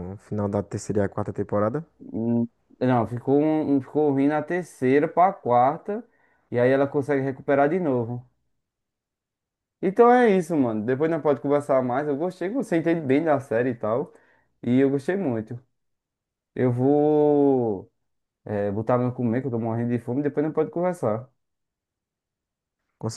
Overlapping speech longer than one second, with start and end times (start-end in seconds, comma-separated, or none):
none